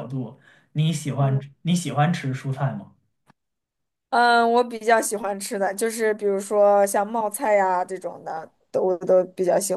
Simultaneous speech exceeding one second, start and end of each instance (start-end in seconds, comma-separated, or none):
none